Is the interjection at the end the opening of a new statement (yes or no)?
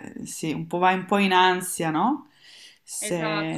yes